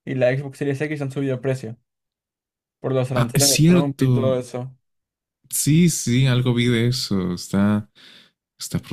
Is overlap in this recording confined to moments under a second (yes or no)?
no